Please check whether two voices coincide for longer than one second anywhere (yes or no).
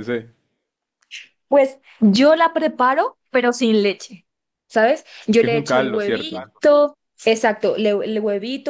yes